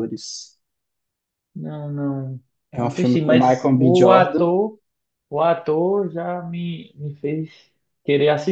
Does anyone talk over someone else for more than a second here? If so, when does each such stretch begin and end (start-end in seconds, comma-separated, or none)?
2.7-4.5